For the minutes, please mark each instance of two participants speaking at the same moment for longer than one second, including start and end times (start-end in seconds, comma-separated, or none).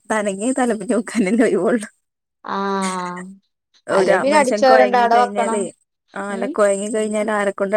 4.0-5.6